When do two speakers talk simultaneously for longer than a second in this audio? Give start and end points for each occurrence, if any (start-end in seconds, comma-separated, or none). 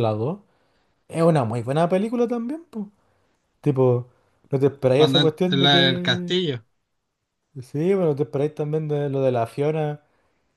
5.0-6.4